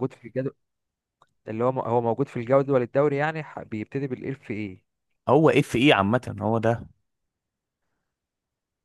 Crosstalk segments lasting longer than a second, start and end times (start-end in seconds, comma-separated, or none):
none